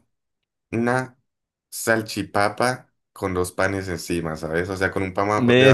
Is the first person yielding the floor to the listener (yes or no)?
yes